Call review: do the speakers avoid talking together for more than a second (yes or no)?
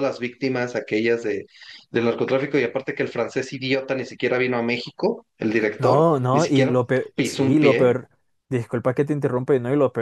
no